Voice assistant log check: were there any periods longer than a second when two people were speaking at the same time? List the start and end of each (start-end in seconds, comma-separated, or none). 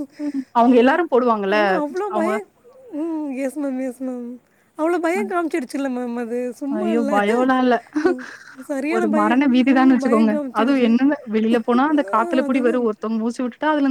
8.9-10.9